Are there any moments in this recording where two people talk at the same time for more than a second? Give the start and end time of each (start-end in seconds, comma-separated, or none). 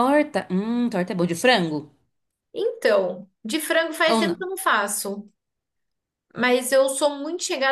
none